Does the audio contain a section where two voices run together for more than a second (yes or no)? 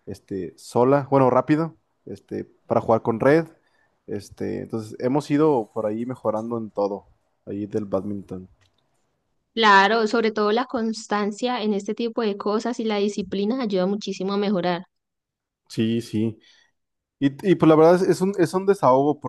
no